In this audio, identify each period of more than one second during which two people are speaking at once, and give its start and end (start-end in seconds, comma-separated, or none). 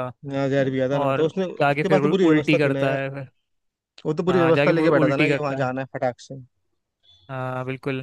1.0-3.0, 4.3-5.7